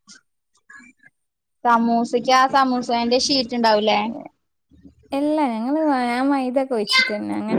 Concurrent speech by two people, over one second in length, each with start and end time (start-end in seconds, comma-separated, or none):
none